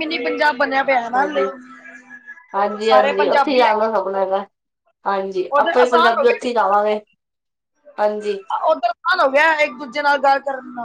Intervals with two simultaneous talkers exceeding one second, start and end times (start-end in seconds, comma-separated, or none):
2.8-4.2